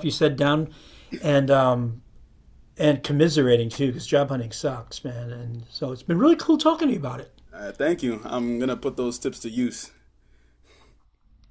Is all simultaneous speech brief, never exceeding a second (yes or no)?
yes